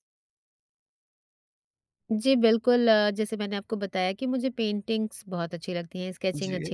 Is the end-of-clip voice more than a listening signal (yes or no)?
no